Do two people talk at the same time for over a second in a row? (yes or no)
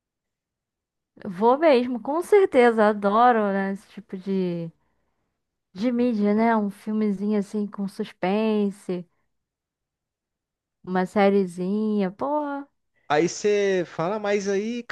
no